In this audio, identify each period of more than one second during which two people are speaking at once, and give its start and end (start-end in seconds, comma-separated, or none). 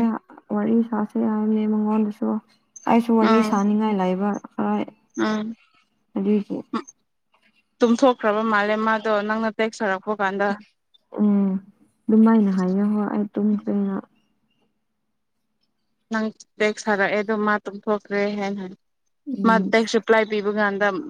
none